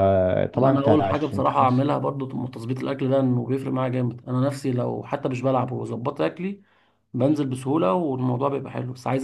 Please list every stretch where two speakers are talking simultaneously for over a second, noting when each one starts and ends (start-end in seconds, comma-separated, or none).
0.5-1.9